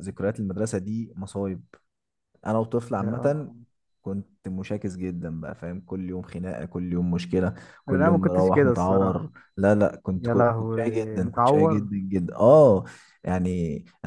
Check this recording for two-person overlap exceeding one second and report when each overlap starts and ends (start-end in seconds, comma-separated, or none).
7.9-9.3, 10.1-11.9